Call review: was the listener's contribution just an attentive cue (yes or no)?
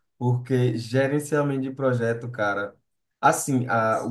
yes